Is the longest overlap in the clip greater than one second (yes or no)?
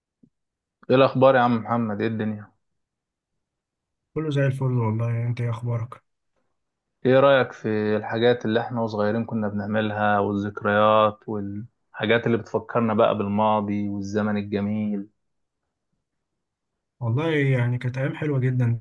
no